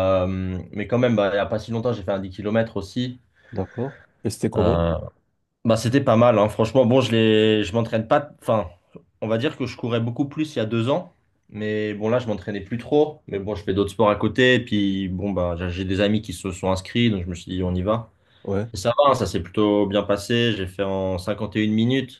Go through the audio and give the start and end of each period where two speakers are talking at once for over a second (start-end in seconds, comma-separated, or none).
none